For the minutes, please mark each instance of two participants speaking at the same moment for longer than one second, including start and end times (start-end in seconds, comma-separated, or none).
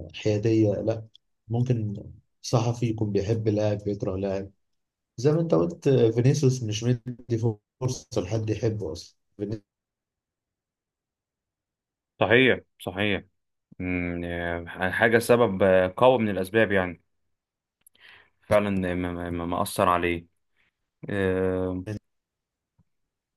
none